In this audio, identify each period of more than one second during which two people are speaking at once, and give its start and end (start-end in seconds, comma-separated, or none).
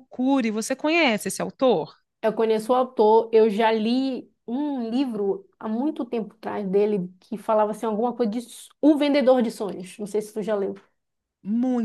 none